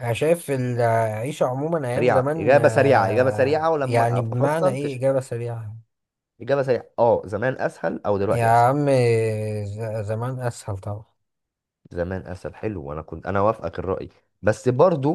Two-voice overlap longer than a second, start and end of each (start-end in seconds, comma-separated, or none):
1.9-5.0